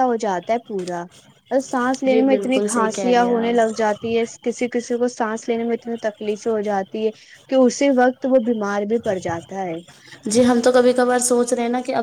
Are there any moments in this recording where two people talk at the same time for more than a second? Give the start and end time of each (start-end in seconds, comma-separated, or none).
2.1-3.5